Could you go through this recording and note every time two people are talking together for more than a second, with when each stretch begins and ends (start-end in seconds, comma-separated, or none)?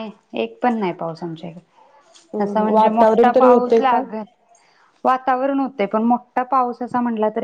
2.1-4.0